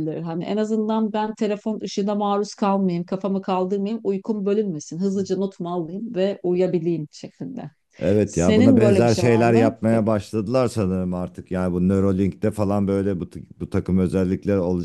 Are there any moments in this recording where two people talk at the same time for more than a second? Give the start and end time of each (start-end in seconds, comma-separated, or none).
8.2-10.0